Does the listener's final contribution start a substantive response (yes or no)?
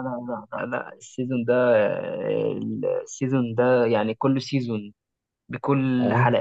no